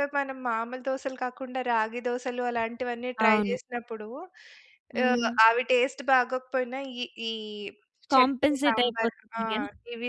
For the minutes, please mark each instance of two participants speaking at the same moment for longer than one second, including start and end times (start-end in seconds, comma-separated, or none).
8.1-9.6